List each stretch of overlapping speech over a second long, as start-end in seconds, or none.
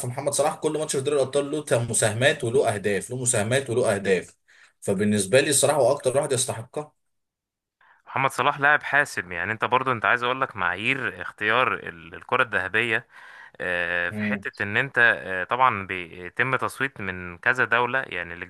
none